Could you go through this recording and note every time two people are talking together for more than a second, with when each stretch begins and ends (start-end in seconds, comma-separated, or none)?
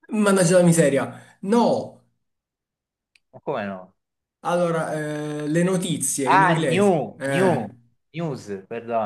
6.2-7.7